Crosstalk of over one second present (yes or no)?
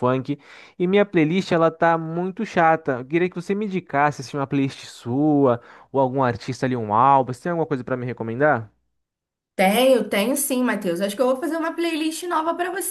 no